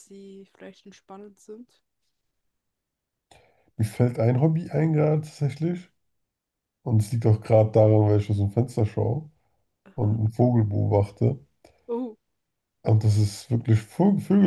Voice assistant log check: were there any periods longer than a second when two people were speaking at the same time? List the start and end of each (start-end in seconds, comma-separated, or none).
none